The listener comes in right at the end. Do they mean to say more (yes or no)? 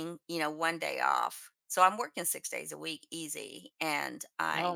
no